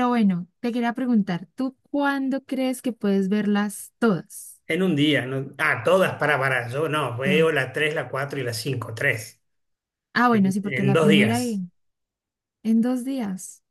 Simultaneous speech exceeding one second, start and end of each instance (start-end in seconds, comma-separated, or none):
10.3-11.6